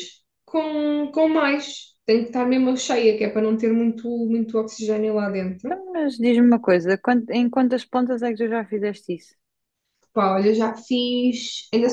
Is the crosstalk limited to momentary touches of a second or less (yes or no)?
yes